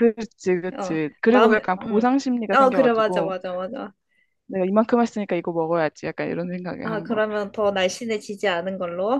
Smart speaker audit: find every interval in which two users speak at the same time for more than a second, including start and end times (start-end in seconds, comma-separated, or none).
0.8-3.4